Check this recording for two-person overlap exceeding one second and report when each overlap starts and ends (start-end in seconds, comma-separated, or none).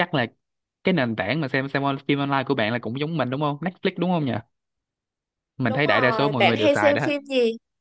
5.7-7.1